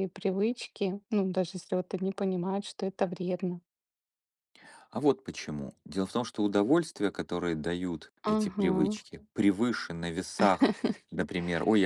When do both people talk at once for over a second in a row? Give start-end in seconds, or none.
none